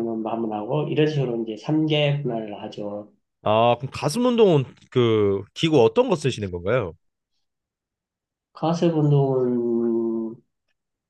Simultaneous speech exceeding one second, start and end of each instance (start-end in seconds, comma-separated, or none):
none